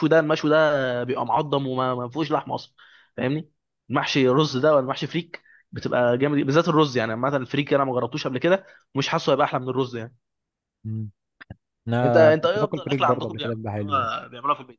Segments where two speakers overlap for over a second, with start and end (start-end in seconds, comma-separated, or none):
12.0-14.1